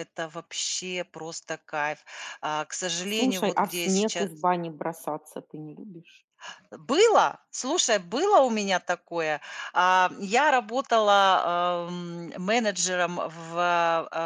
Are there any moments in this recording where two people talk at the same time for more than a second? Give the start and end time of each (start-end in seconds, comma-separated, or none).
3.0-4.3